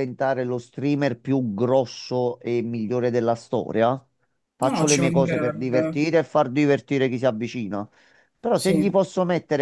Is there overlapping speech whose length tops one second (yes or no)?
yes